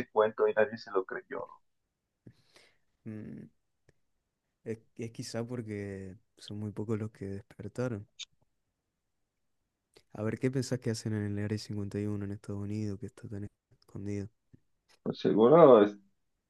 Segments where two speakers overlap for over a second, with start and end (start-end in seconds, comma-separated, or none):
none